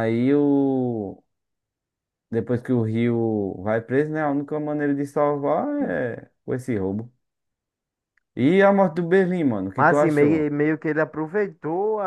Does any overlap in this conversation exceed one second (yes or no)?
no